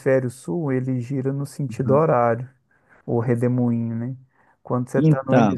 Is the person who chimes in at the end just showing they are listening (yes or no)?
yes